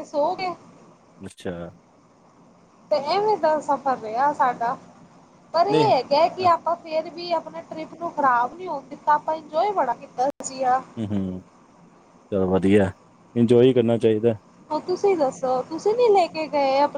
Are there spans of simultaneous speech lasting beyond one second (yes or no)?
no